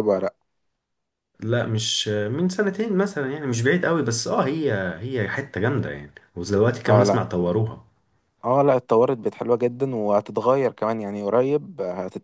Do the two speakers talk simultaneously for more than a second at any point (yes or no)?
no